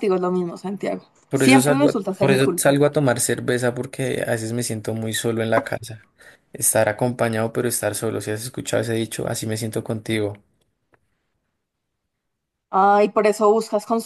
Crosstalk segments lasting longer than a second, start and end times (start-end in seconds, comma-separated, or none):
1.3-2.8